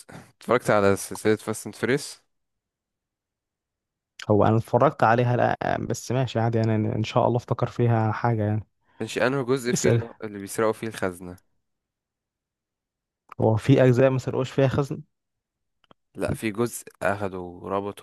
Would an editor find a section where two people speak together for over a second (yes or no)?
no